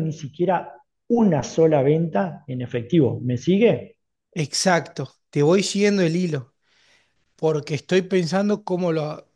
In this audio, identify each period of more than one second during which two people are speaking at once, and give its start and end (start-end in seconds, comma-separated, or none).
none